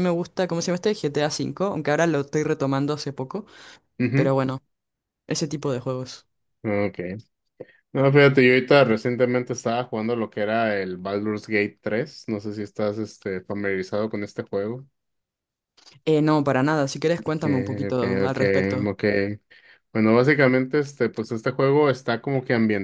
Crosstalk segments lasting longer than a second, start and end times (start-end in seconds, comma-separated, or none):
17.4-18.9